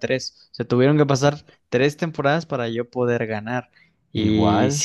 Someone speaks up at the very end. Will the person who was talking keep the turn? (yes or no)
yes